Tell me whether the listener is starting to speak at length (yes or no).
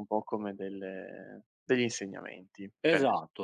yes